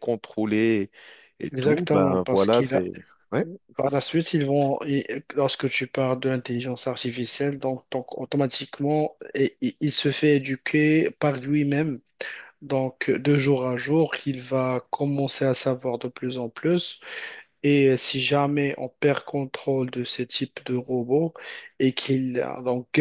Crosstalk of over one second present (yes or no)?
yes